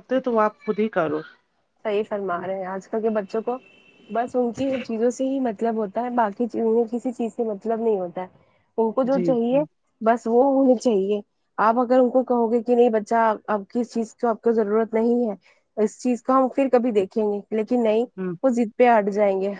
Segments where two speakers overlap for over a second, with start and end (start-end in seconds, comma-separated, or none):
none